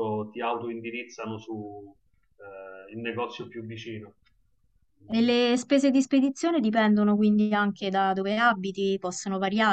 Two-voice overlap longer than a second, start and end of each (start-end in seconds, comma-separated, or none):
none